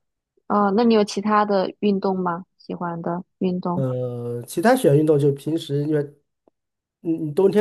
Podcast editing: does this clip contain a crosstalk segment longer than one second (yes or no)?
no